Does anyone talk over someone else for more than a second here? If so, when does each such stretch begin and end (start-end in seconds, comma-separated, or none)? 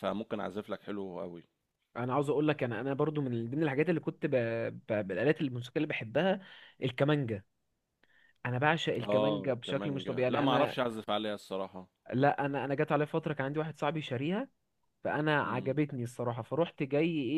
9.0-10.8